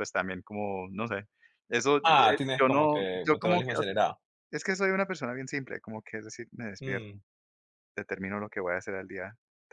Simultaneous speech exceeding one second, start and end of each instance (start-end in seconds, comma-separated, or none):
2.6-4.0